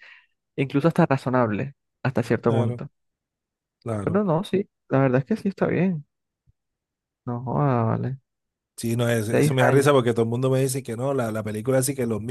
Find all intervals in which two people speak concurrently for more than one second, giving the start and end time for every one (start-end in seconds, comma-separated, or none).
none